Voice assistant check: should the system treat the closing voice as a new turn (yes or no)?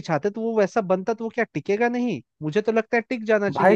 yes